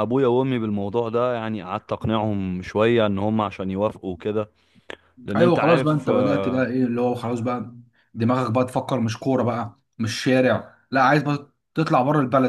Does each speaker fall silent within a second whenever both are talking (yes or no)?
no